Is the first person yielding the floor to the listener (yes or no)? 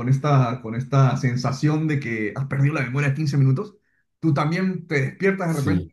no